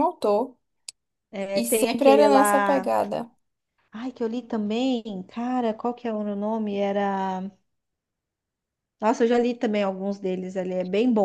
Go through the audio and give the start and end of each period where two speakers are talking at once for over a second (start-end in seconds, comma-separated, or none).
1.5-2.9